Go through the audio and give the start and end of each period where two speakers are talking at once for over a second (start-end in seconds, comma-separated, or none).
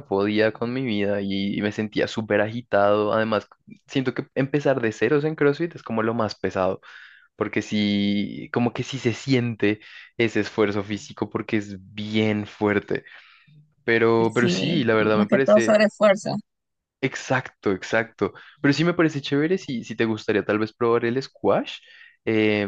14.4-15.8